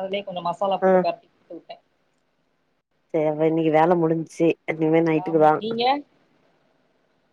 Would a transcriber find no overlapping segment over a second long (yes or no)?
yes